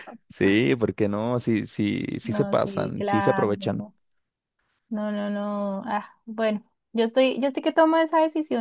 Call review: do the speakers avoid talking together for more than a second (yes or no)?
no